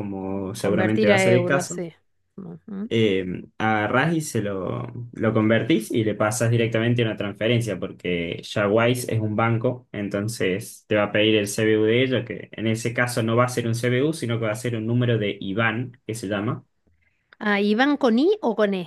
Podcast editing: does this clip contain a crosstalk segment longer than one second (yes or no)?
yes